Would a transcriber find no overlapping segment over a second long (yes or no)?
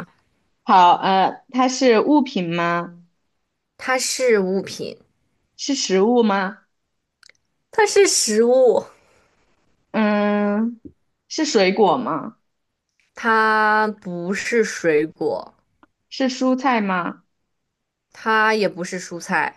yes